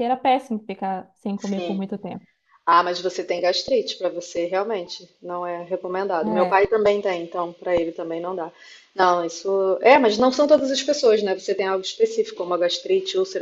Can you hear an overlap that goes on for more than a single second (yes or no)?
no